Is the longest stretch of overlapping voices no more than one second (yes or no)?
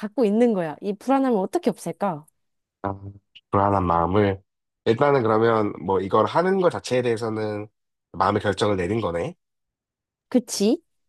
yes